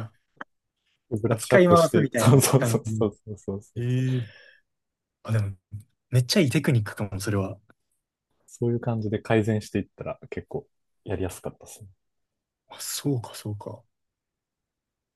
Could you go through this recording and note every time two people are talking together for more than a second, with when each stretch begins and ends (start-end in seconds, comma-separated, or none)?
1.3-3.1